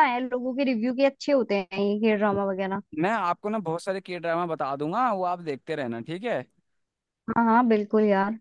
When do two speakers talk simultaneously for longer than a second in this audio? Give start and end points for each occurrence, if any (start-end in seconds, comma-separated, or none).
none